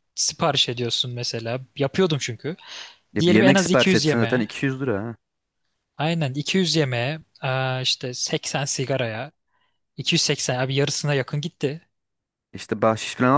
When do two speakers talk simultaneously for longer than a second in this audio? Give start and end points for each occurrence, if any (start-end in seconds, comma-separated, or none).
3.2-4.5